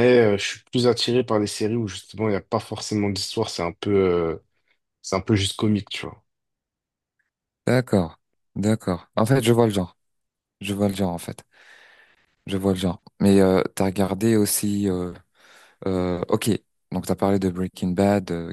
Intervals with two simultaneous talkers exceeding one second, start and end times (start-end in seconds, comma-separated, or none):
none